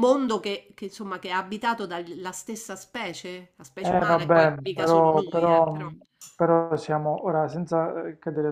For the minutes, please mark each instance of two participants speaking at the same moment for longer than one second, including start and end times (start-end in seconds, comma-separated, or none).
3.8-5.8